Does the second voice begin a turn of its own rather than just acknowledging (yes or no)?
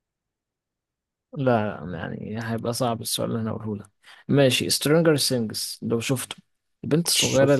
no